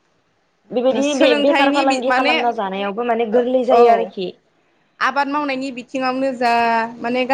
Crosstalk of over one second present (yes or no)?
yes